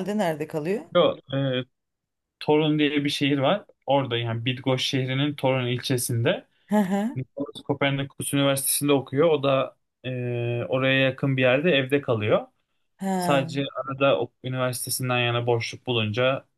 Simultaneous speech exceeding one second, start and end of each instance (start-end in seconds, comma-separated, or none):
none